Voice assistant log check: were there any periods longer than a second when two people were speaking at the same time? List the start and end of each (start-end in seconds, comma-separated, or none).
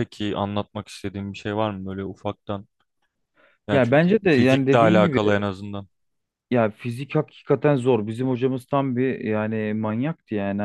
3.7-5.2